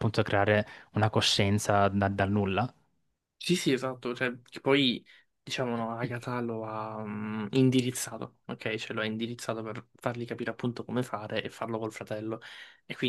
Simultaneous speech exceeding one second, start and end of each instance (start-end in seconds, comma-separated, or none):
none